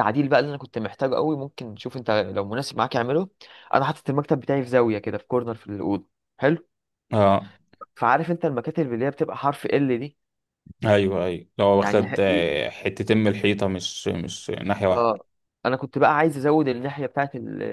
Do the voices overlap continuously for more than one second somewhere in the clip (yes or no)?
no